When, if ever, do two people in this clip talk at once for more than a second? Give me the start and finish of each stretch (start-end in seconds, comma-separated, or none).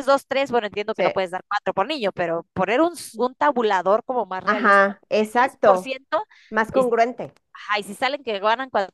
4.5-5.9